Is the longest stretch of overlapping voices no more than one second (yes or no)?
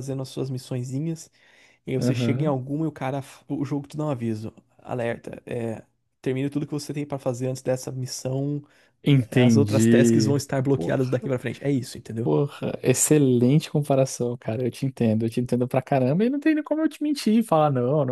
no